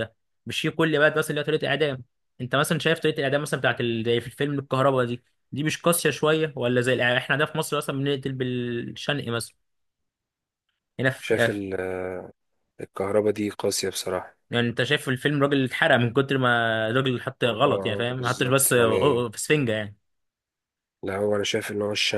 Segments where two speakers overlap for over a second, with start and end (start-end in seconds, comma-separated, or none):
17.6-19.2